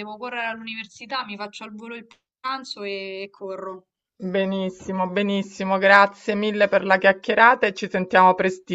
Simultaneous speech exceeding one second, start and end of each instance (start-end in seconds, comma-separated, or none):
none